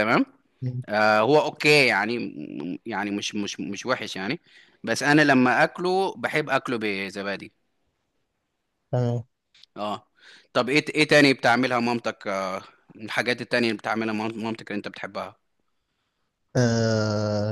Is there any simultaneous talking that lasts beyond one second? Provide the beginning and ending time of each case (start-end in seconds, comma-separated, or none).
none